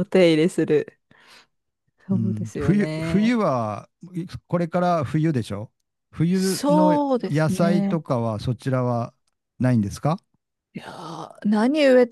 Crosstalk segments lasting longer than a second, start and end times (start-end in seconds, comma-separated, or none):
2.1-3.4, 6.3-8.0